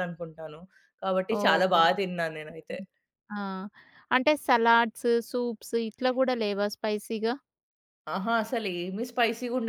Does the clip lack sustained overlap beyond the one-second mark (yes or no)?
yes